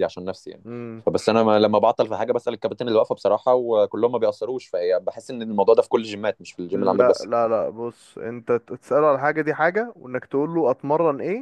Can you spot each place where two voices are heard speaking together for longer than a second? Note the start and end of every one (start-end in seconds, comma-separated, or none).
none